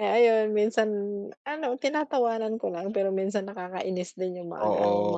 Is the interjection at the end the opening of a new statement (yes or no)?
yes